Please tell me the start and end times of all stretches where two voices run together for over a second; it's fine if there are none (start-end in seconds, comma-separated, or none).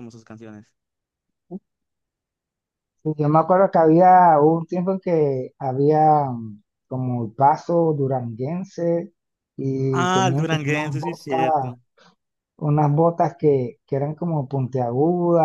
9.9-11.7